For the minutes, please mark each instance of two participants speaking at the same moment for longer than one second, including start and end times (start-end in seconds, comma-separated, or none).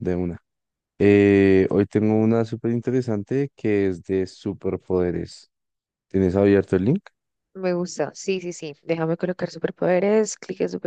none